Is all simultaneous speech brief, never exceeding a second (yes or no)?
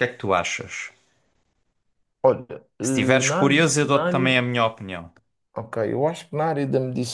no